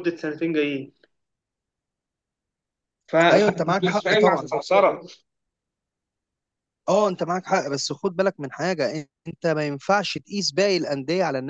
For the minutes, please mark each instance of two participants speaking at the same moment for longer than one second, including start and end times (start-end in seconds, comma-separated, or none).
3.3-4.5